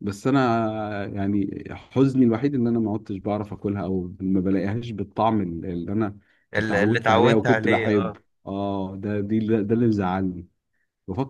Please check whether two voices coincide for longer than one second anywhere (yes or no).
yes